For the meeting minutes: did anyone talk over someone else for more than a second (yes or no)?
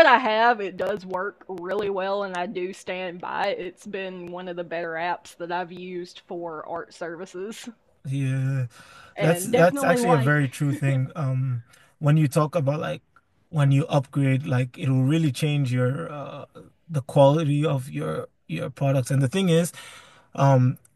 yes